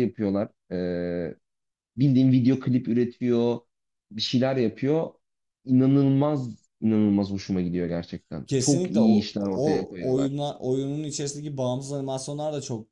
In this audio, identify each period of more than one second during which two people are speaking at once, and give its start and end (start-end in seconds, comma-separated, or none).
8.5-10.4